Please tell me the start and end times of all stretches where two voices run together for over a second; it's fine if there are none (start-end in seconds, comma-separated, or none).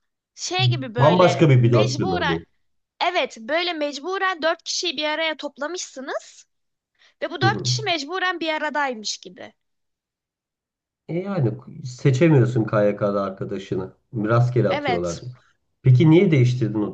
1.0-2.4